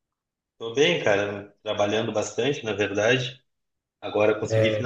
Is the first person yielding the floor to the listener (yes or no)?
no